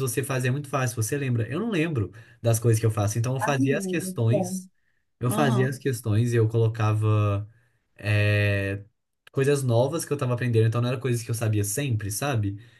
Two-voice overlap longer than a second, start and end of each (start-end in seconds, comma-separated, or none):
3.4-4.6